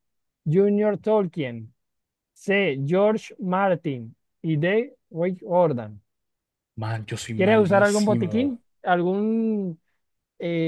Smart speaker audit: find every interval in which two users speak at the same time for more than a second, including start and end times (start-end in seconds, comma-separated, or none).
7.3-8.6